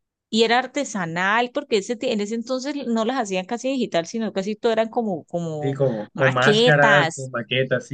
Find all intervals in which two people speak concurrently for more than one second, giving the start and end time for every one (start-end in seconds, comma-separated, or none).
5.6-7.3